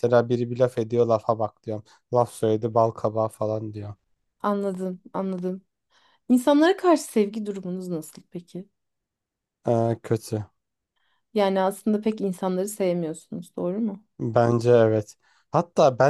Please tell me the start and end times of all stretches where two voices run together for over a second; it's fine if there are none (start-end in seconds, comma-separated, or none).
none